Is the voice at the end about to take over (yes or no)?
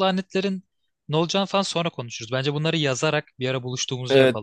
yes